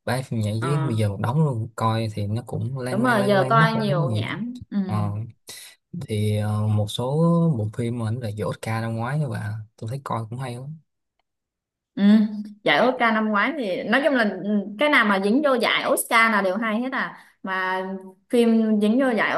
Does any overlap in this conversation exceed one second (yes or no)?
yes